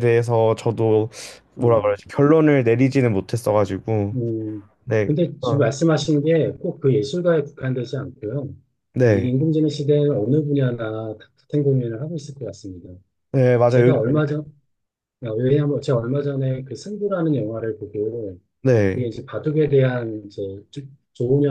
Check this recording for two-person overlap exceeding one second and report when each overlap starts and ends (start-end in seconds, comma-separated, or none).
none